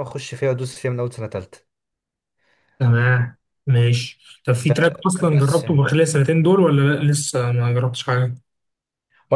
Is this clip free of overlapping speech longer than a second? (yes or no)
no